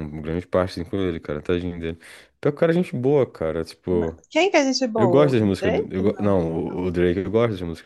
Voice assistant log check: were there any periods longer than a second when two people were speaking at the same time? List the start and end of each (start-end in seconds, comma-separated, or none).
5.0-6.9